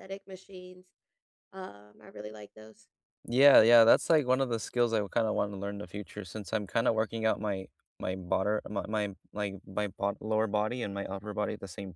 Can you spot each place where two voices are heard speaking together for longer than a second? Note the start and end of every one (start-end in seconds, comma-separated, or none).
none